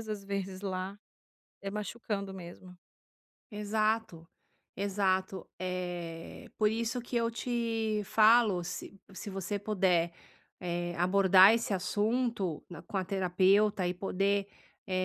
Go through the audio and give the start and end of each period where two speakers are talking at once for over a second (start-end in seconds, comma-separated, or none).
none